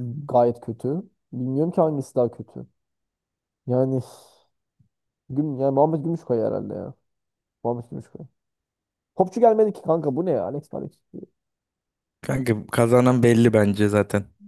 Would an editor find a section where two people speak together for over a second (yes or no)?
no